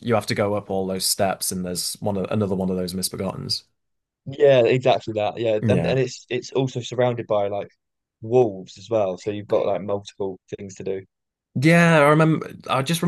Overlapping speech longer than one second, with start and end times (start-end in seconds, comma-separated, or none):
none